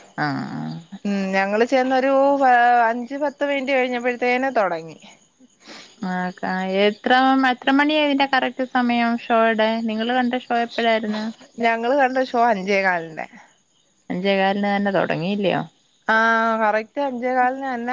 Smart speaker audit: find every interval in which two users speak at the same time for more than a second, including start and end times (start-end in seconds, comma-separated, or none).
none